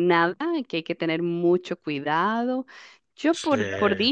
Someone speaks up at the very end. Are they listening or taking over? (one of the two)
listening